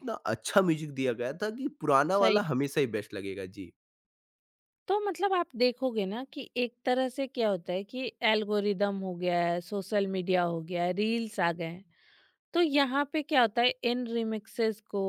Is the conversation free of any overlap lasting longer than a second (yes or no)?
yes